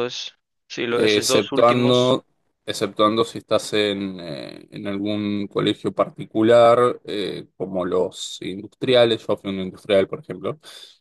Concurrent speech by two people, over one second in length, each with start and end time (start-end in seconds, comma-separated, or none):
1.0-2.2